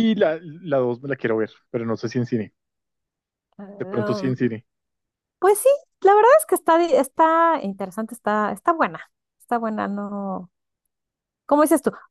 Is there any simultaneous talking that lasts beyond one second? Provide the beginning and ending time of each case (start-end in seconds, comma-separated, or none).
none